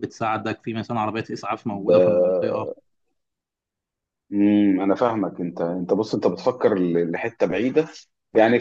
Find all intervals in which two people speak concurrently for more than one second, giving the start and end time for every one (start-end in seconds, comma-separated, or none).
none